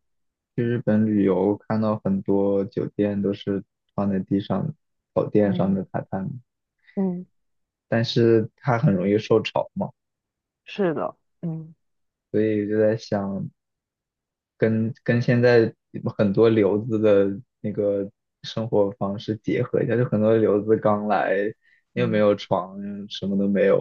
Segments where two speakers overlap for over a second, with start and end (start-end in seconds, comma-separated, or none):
none